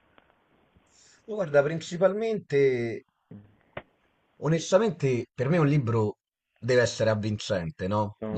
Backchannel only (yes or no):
yes